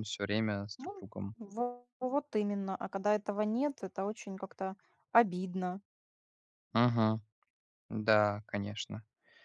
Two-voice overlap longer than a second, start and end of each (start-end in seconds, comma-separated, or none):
none